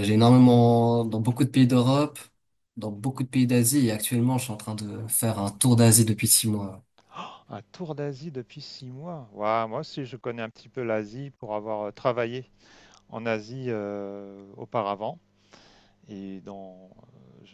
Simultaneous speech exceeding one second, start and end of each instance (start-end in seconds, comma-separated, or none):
none